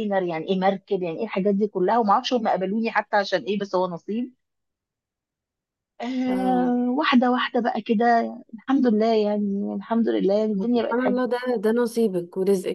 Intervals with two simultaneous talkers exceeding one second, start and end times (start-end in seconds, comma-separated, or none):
none